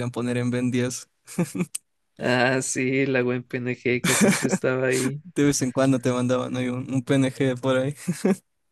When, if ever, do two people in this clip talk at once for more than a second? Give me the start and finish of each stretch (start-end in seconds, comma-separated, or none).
none